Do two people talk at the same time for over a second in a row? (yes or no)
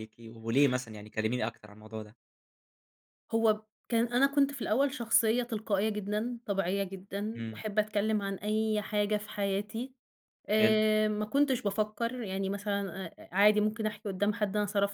no